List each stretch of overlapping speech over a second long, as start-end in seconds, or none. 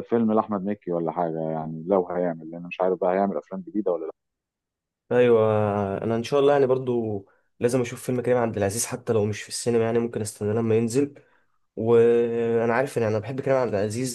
none